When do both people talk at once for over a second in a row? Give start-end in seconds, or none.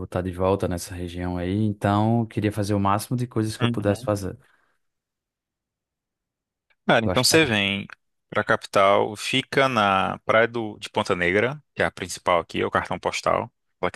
none